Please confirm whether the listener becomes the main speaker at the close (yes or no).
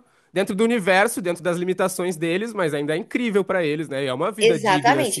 yes